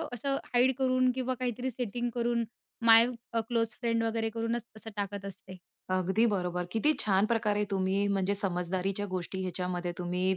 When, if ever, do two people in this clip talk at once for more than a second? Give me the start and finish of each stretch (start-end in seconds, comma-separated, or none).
none